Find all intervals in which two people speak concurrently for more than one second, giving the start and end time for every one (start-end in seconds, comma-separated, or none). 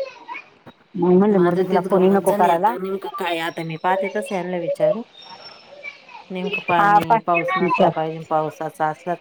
1.4-2.7